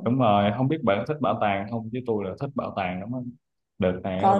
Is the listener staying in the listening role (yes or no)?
yes